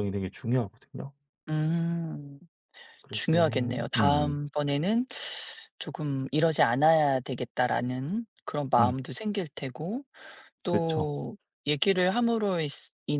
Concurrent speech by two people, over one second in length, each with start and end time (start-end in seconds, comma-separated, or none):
3.1-4.4